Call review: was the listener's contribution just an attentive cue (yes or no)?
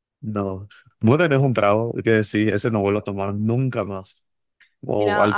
no